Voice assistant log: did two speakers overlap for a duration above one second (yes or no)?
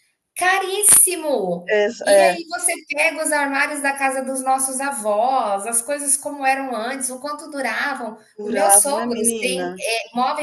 yes